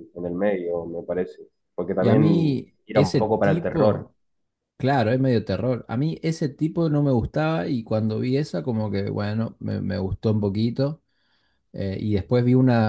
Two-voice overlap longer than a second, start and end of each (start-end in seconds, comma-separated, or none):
2.0-4.1